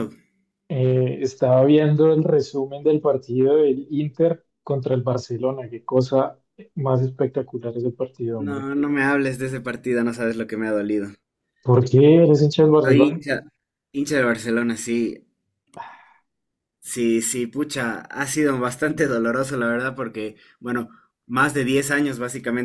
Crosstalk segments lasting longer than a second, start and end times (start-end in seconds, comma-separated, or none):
none